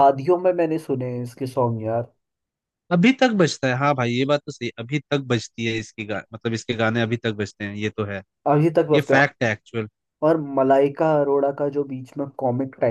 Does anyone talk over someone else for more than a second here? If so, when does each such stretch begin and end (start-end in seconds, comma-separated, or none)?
none